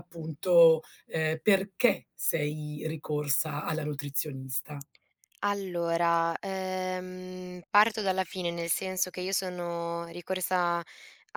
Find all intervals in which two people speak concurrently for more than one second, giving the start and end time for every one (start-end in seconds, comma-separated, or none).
none